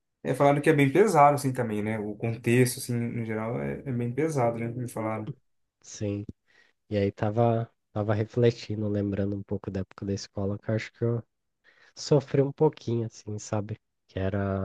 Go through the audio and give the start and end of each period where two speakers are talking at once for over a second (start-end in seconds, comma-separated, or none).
none